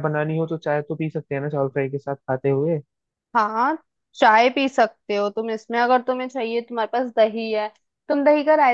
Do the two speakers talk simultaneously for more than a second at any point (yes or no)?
no